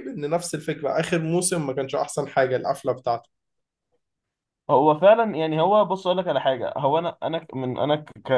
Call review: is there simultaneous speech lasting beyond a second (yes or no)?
no